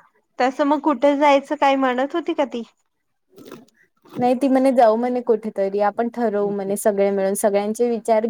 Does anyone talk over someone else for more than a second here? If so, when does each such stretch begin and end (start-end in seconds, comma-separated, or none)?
none